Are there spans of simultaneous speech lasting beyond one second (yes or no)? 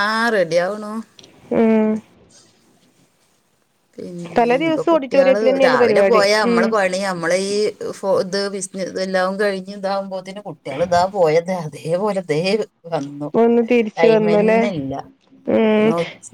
yes